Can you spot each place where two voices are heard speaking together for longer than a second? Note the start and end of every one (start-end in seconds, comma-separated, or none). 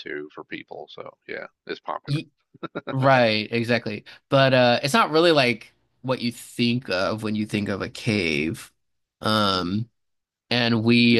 none